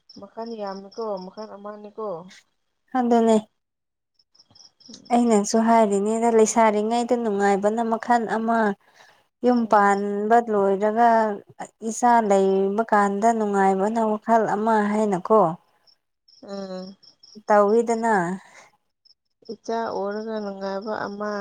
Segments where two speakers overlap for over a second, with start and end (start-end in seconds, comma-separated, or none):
none